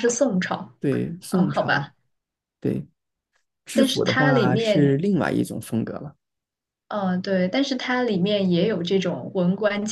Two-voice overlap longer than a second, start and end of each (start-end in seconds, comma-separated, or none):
3.7-4.9